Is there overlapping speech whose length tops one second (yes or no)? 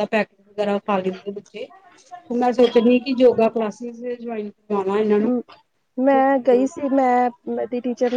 no